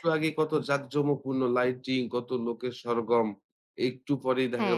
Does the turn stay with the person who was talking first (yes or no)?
yes